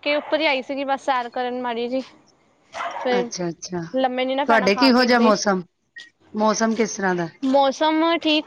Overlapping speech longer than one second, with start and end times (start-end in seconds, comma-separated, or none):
4.0-5.6